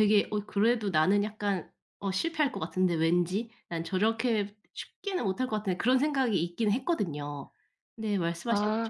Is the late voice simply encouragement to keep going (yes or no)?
yes